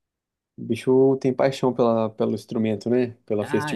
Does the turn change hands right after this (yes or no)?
yes